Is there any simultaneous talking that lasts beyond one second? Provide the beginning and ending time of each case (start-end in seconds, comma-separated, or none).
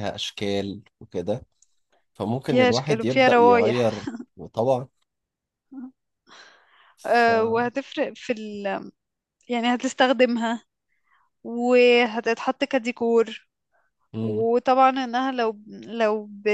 2.5-4.1